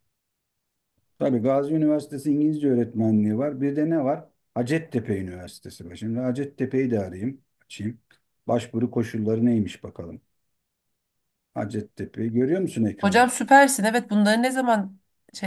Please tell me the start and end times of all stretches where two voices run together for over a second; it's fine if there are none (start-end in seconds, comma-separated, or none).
none